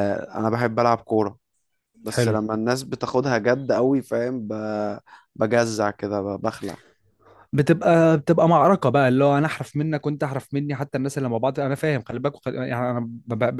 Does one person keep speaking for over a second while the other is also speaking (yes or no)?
no